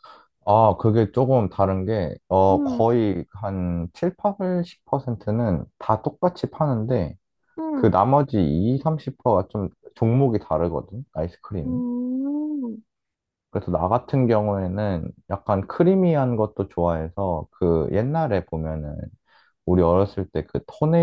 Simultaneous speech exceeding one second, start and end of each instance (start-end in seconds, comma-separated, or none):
none